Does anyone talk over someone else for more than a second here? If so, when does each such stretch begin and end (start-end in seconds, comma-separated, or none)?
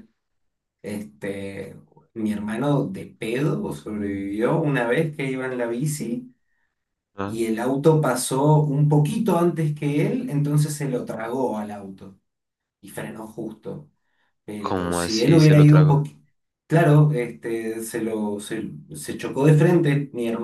14.6-16.0